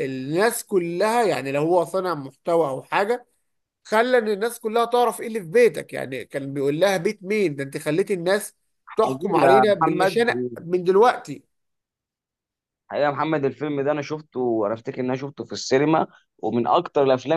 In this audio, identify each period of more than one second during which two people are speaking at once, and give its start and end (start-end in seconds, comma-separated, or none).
8.9-10.2